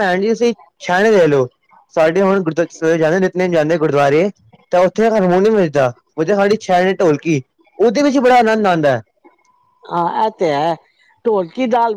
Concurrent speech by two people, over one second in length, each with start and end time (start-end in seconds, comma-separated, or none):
none